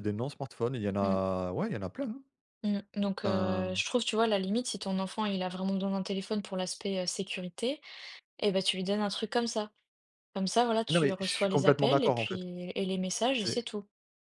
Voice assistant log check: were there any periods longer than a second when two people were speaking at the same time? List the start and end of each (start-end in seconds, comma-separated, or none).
10.9-12.4